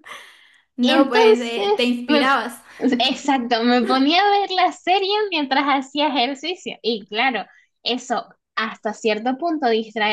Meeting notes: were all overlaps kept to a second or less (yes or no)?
no